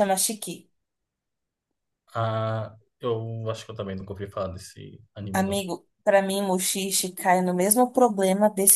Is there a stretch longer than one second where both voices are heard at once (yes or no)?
no